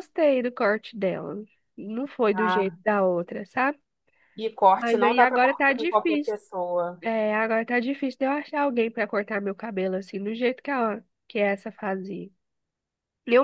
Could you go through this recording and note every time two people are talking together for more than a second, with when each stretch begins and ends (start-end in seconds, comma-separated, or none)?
4.7-6.3